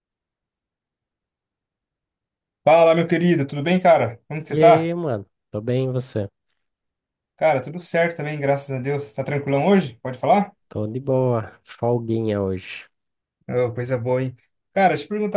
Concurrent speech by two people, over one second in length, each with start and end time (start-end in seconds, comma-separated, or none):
none